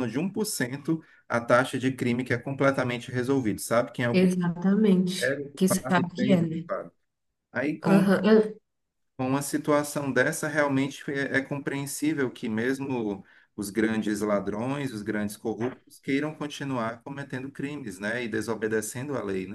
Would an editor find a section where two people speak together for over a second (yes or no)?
yes